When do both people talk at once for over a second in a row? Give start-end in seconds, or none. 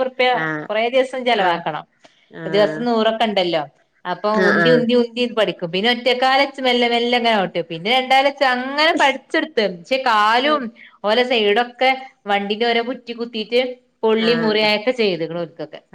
none